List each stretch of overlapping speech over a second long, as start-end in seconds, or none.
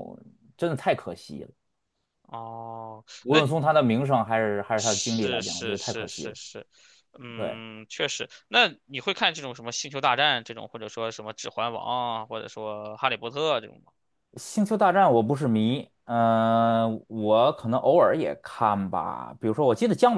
4.8-6.3